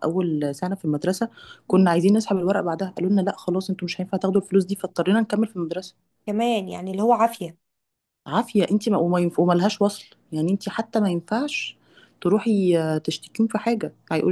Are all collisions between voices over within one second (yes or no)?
yes